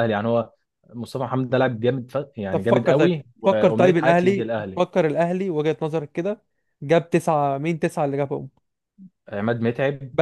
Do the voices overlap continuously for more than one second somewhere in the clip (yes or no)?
yes